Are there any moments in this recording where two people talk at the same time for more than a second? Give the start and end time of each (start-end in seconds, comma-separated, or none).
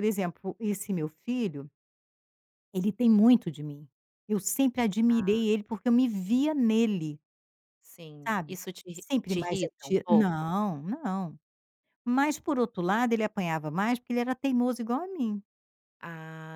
8.2-10.5